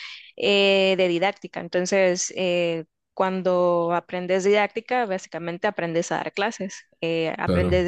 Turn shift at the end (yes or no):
no